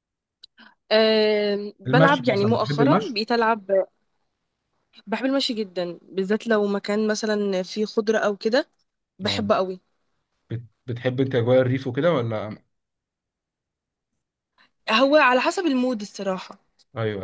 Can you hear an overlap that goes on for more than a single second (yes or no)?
yes